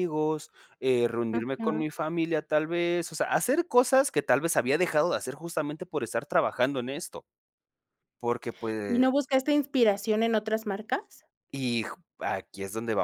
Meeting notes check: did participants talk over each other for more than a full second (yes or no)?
no